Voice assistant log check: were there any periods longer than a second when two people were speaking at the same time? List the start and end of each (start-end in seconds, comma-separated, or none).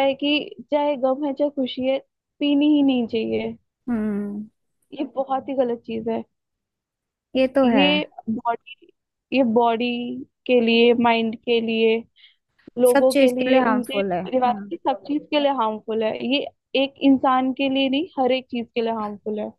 12.9-14.6